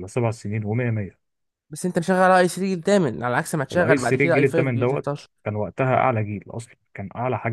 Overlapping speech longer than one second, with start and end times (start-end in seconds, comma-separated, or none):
3.7-5.3